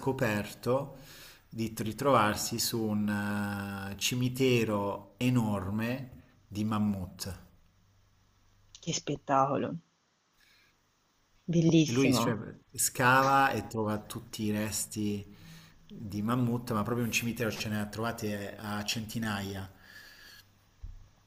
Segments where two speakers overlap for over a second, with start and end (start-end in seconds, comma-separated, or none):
none